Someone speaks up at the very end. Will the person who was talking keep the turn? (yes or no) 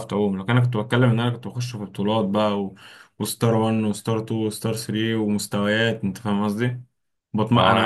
yes